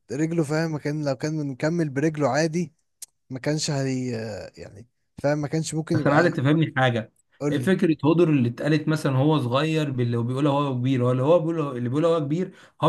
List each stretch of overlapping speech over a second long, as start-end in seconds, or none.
none